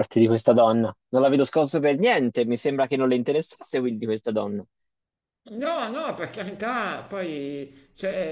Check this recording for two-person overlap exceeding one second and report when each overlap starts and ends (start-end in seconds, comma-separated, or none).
none